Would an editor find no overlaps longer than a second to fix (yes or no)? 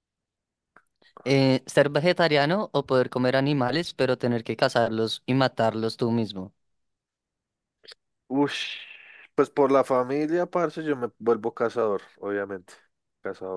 yes